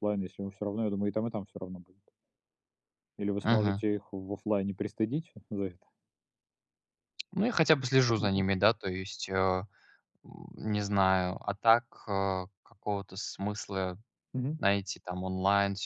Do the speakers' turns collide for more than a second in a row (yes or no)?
no